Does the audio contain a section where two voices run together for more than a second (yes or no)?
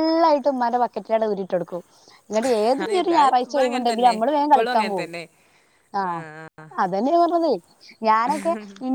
yes